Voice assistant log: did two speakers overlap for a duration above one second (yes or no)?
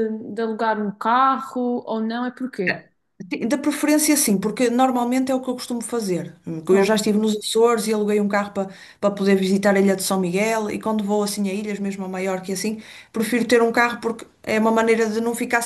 no